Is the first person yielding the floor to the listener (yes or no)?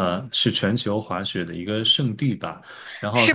yes